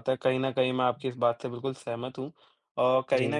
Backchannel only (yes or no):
yes